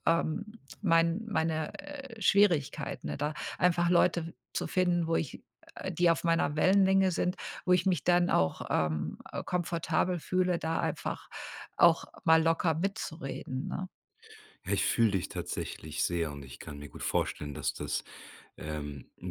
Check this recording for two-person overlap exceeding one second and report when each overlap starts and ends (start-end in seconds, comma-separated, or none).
none